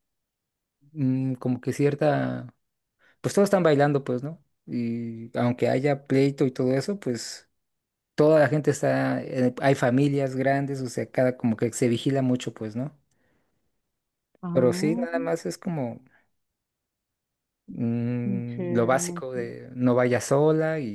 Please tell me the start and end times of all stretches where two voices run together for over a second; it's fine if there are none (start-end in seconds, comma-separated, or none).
18.2-19.5